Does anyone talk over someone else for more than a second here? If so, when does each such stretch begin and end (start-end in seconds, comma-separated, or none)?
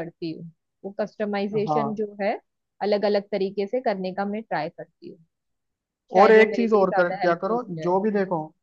6.2-8.0